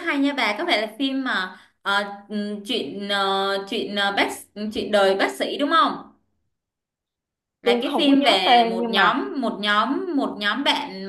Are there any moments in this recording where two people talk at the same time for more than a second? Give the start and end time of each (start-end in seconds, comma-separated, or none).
7.6-9.1